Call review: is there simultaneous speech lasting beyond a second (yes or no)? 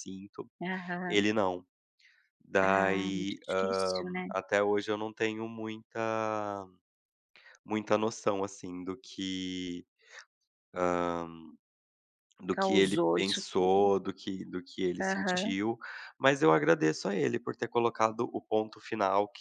yes